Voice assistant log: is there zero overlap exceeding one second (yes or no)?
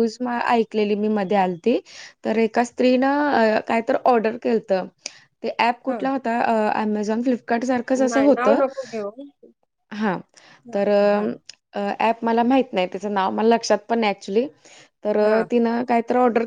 yes